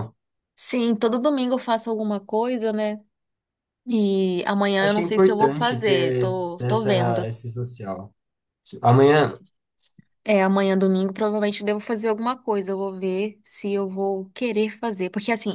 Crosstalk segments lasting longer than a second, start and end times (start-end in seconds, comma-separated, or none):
4.8-7.3